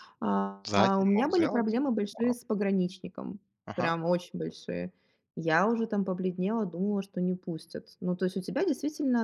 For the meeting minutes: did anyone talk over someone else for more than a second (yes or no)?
yes